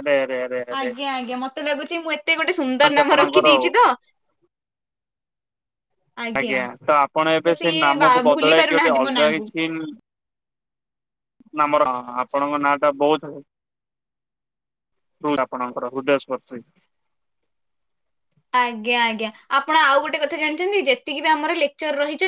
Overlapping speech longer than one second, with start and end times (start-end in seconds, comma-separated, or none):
7.5-9.4